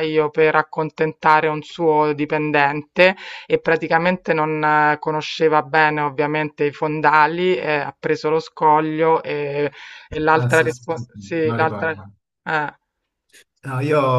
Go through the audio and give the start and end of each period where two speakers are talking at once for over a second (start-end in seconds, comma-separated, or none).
10.3-11.9